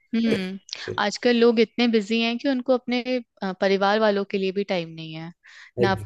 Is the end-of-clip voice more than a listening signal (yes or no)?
no